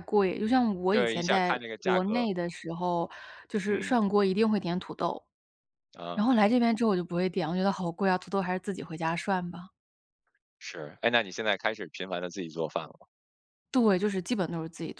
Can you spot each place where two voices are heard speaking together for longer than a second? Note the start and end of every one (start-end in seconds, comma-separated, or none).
0.9-2.2